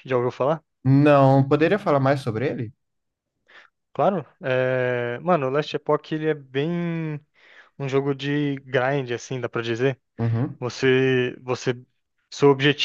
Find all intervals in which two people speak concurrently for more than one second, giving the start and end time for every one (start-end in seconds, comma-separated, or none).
none